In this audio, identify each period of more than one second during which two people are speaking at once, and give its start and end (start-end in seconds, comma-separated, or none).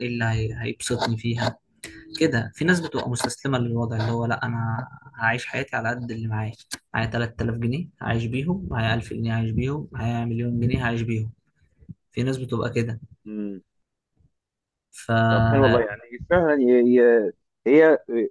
none